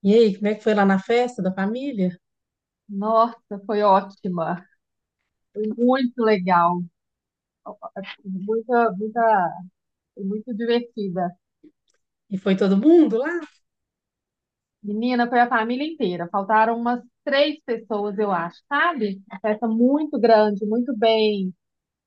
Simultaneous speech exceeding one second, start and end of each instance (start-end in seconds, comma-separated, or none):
none